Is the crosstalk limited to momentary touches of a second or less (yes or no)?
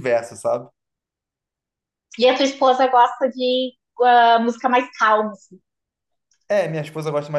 yes